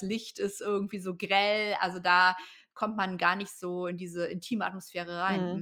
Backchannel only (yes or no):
no